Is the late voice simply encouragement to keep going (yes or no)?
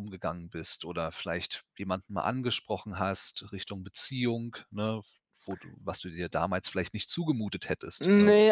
no